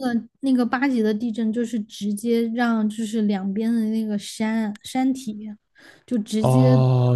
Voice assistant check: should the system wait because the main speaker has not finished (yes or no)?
no